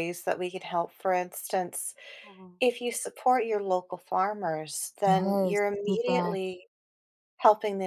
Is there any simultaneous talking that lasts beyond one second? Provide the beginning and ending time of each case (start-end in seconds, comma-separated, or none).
5.0-6.4